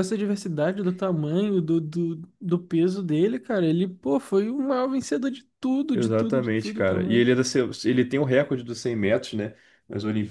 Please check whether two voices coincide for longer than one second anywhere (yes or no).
yes